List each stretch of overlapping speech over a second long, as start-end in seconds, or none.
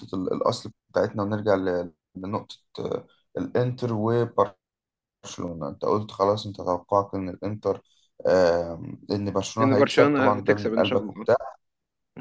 9.6-11.2